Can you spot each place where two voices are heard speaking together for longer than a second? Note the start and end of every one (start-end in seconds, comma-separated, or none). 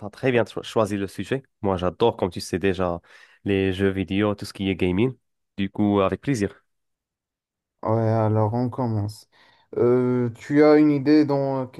none